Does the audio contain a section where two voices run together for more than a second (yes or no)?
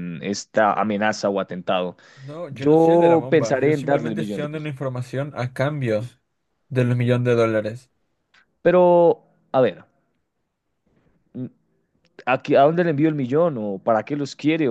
yes